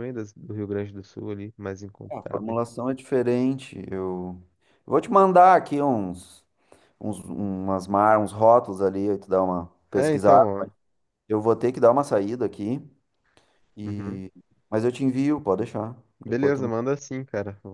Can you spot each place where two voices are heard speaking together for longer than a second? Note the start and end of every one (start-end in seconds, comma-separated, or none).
none